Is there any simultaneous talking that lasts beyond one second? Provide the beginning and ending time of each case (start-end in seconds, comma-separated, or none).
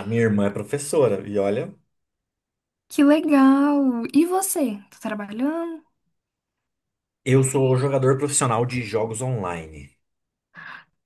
none